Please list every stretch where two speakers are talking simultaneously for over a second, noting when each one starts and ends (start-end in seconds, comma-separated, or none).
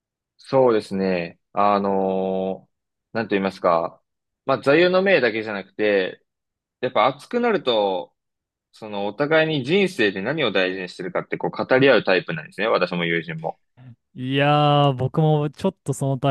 none